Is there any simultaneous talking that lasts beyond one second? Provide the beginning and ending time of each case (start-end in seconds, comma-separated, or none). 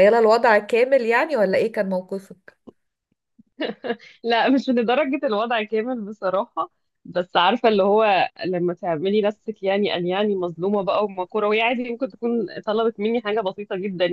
none